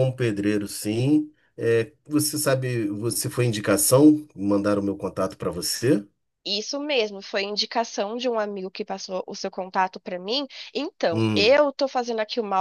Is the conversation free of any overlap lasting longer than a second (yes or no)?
yes